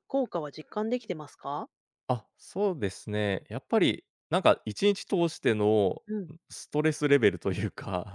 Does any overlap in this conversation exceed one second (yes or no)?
no